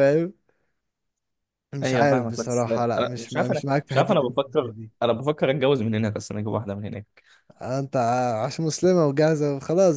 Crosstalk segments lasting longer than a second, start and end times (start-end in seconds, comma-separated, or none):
1.8-4.9